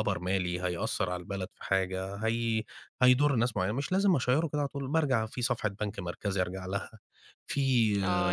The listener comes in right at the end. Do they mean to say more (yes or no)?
yes